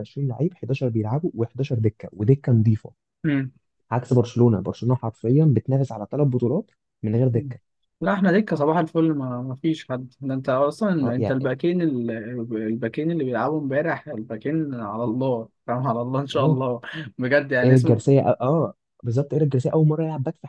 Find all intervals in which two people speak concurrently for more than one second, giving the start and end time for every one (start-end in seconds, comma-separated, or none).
none